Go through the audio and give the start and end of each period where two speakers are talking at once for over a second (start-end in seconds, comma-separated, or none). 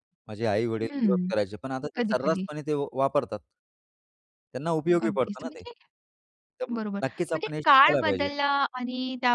6.7-8.3